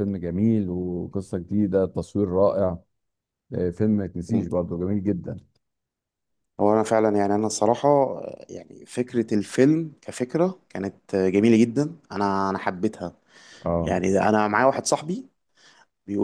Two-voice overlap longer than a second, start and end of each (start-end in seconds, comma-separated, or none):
none